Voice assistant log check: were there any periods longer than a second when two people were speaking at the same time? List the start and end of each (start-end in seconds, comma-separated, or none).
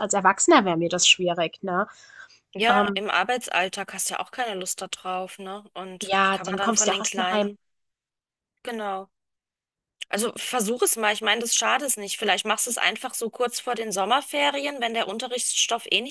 6.0-7.5